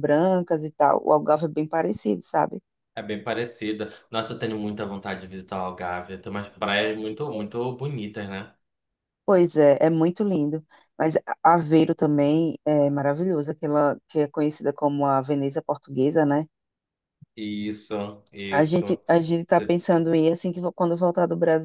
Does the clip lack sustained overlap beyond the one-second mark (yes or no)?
yes